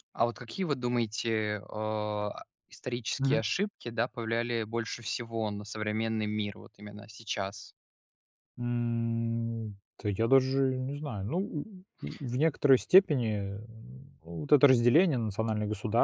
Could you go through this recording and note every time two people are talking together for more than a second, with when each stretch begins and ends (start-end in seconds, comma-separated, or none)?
none